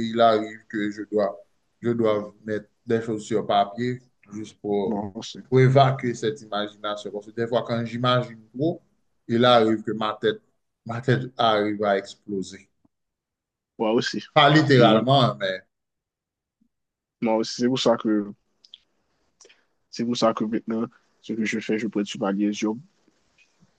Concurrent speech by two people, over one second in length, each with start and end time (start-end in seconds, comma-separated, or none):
none